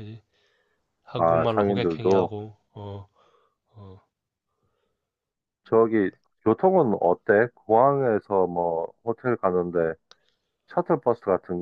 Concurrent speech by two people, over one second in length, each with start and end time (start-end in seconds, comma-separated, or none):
1.1-2.3